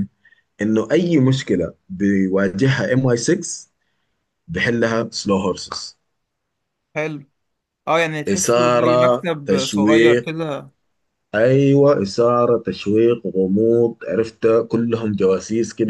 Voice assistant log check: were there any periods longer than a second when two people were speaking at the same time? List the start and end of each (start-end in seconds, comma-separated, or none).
8.3-10.3